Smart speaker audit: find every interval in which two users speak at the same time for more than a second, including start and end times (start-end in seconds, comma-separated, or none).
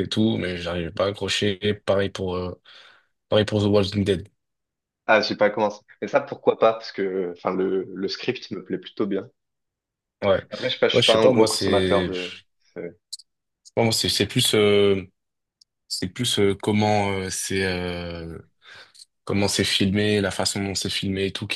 10.9-12.3